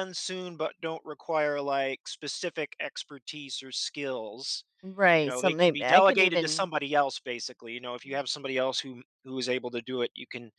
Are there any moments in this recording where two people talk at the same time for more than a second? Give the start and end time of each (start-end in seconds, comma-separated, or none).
5.2-6.7